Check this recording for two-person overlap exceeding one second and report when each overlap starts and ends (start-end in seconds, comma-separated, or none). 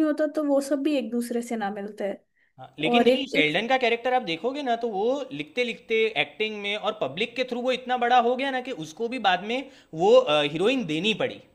none